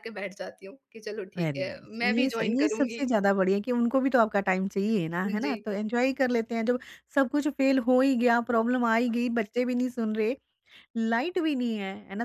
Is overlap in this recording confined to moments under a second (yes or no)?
no